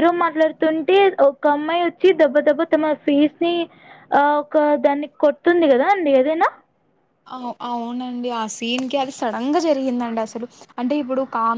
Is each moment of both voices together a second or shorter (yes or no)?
yes